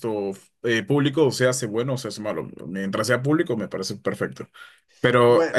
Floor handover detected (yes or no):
no